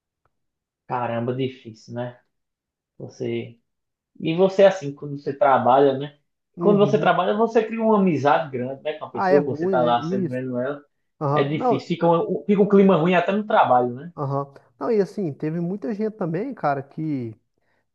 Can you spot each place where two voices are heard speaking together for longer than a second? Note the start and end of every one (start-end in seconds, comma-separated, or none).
9.1-10.4